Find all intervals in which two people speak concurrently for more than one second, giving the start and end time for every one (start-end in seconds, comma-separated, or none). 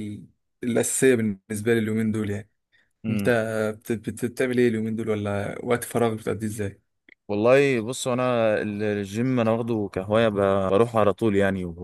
none